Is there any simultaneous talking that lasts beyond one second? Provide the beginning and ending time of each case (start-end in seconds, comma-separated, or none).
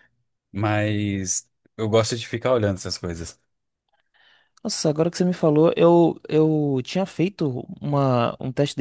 none